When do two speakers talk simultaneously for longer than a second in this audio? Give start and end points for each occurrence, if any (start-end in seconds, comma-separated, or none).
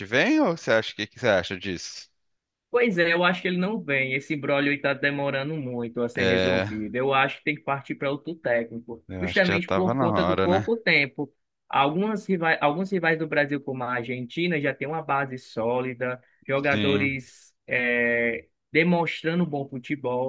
9.1-10.7